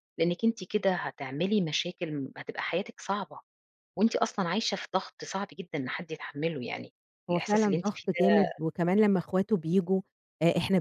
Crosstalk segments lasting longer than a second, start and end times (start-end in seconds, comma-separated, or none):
7.3-8.6